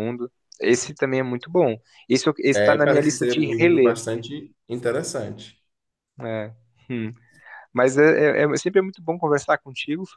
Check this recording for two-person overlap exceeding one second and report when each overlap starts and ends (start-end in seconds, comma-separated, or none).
2.5-4.0